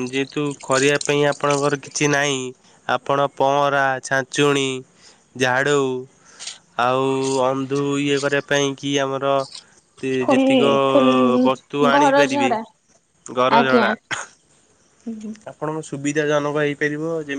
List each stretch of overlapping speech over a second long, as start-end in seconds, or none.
none